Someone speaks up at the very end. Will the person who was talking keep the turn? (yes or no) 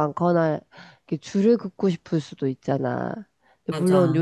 yes